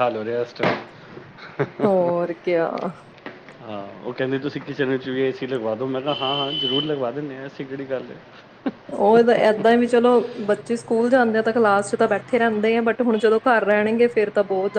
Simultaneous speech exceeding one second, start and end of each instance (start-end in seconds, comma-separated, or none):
none